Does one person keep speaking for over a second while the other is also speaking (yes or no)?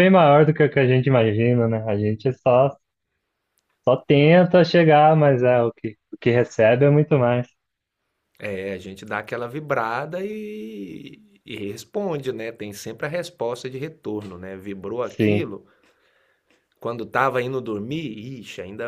no